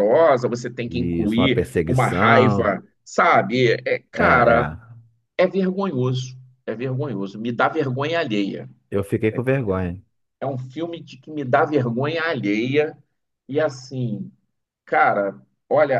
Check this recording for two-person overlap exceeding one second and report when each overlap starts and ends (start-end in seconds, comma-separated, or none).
0.8-2.7